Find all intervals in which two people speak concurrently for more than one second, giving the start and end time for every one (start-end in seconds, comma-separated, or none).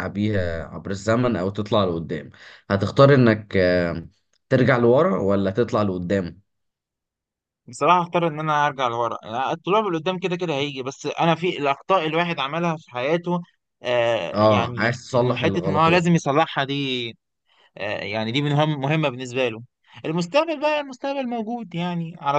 14.3-16.1